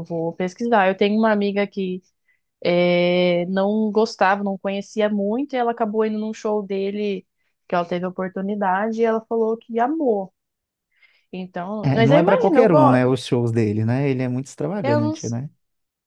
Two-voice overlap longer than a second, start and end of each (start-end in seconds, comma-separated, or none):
11.8-13.0